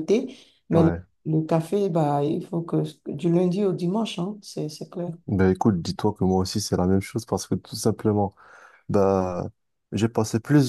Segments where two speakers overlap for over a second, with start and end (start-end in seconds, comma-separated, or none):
none